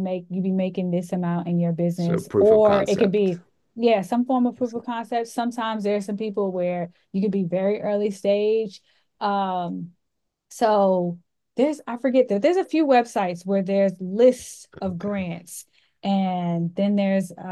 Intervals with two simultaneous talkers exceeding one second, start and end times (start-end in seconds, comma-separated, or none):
1.9-3.4